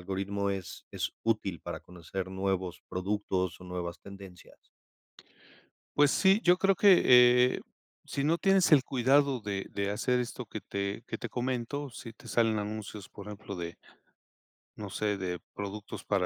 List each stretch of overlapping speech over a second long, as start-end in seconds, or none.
none